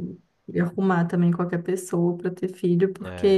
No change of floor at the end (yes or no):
no